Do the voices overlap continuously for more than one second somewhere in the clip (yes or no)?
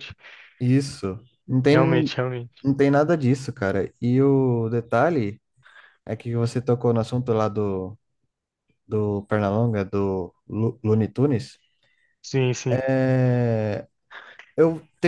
no